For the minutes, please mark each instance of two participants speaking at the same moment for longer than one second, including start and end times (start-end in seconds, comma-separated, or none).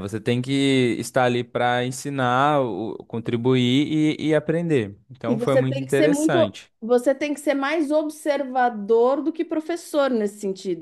5.3-6.7